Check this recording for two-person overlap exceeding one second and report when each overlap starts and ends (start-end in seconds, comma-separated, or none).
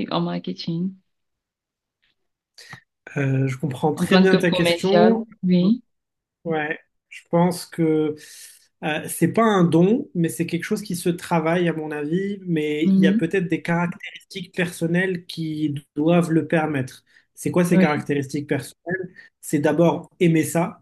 3.9-5.2